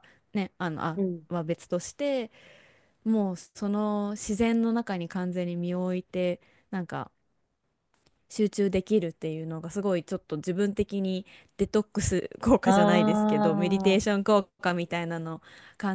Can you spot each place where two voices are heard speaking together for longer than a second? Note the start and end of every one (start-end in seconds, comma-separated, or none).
12.7-14.1